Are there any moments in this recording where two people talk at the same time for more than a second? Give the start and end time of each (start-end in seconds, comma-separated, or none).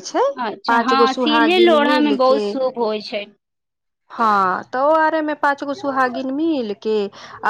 0.7-2.4